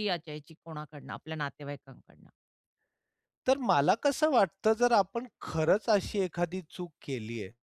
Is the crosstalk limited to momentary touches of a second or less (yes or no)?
yes